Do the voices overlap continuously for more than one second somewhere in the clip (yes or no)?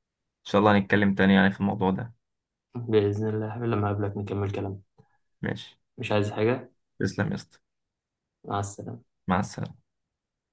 no